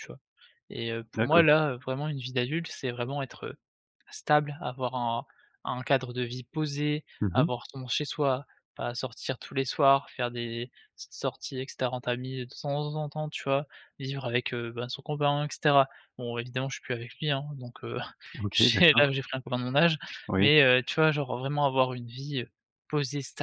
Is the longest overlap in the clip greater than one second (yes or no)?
no